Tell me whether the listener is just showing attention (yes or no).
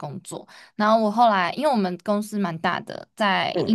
yes